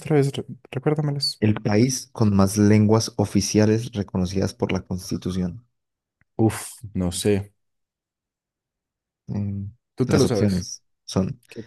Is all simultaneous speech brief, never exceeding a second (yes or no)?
yes